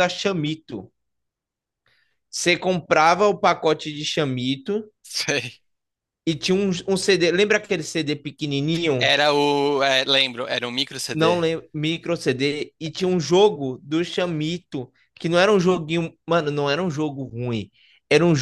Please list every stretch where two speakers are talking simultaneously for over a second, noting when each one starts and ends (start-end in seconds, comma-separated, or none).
none